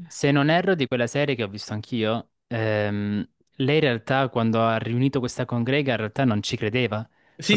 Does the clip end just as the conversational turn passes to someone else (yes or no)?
yes